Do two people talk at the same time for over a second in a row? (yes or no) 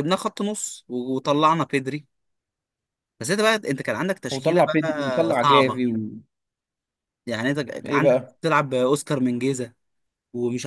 yes